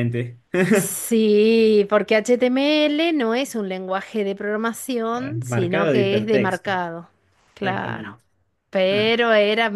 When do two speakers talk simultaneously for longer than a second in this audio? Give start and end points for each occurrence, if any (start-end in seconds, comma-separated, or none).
5.5-6.7